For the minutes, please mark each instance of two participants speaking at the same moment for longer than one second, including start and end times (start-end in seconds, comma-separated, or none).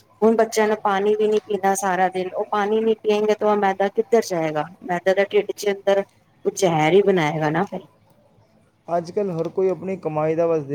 none